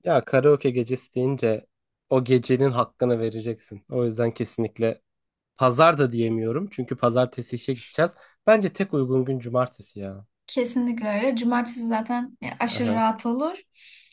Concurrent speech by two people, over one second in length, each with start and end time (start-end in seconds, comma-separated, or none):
none